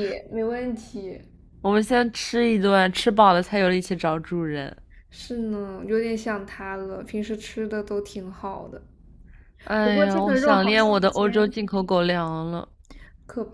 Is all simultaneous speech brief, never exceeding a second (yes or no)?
no